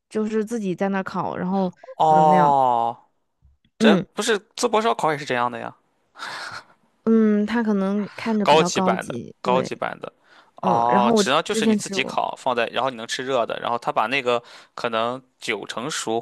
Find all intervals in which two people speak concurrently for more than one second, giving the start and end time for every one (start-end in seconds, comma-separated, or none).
8.4-9.7, 10.6-12.2